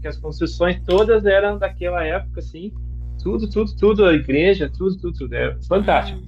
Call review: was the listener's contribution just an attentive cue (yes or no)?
yes